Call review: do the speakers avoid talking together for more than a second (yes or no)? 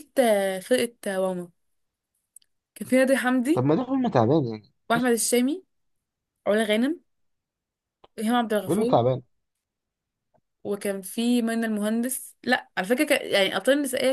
yes